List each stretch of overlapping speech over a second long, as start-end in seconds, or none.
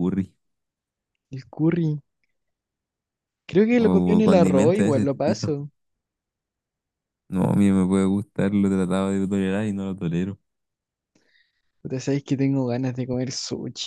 3.8-5.5